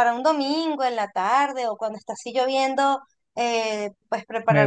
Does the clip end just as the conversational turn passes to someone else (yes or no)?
no